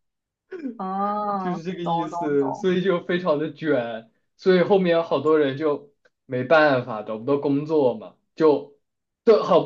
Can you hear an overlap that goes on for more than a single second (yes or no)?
yes